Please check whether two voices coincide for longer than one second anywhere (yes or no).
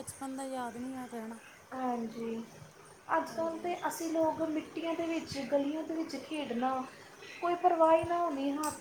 no